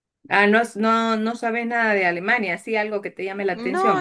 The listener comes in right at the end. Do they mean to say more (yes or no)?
yes